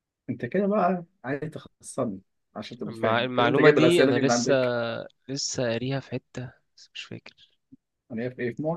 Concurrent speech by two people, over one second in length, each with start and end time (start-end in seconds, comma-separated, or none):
2.9-4.5